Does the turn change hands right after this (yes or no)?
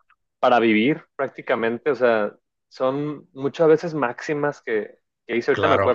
no